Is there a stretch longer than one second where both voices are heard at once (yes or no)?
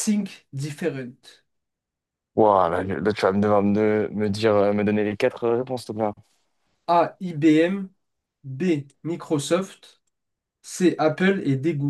no